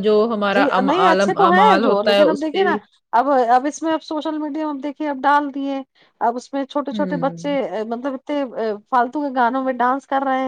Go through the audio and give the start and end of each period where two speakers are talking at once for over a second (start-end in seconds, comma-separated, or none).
0.5-2.7